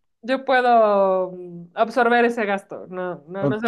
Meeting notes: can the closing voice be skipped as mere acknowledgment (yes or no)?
no